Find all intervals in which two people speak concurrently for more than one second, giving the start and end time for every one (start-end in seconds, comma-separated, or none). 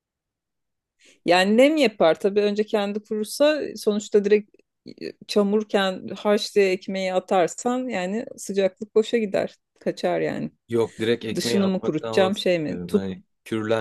11.3-13.1